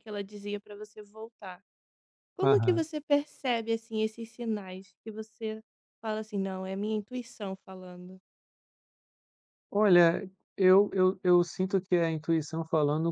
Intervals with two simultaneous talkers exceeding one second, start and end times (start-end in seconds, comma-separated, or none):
none